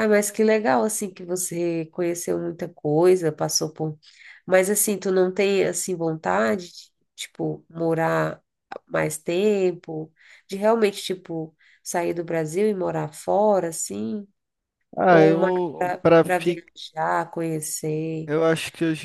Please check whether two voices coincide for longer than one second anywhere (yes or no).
yes